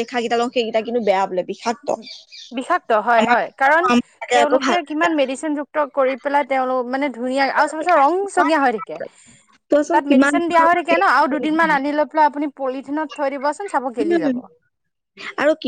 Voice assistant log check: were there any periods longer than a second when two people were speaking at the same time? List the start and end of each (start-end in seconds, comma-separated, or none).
9.9-11.9